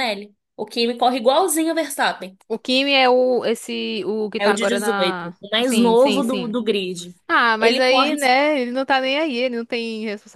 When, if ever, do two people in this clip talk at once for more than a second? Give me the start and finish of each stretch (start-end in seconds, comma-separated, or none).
4.4-6.5